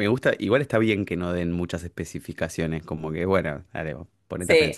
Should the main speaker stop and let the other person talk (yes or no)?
yes